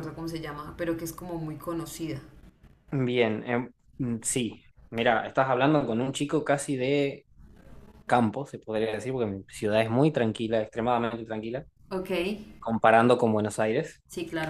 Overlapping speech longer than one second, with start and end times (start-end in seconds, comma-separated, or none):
none